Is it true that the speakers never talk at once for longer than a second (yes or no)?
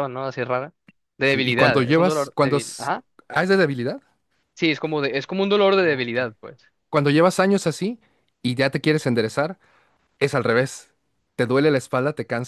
no